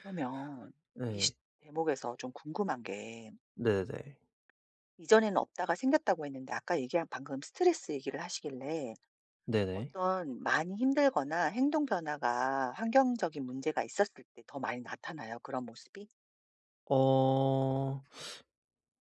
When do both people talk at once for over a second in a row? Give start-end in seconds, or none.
none